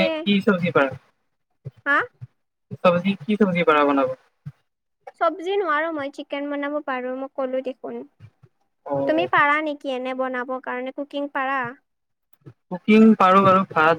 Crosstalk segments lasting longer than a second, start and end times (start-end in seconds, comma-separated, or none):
none